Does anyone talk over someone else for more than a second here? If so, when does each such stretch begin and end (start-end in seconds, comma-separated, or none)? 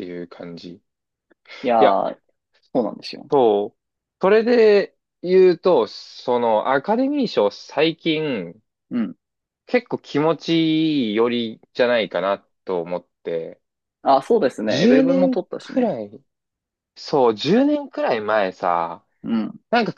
14.7-15.9